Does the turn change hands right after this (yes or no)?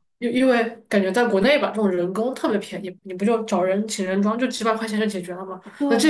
no